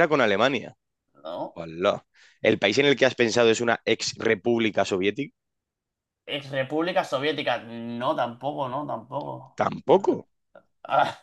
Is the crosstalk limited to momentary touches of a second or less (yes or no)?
yes